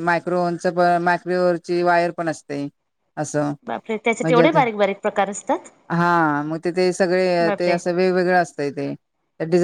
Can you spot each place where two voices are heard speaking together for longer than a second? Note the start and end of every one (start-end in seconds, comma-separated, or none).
none